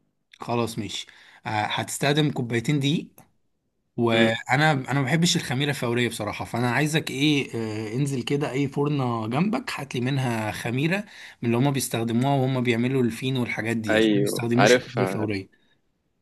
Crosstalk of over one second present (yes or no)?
yes